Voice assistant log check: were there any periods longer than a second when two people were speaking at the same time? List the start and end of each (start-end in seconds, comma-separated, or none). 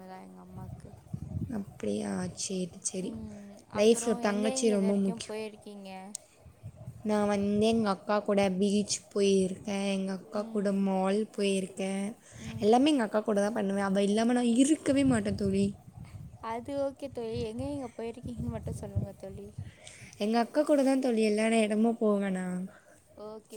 3.8-5.3